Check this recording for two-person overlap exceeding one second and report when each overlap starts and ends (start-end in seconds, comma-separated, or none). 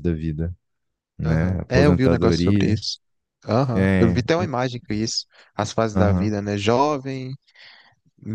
1.2-2.8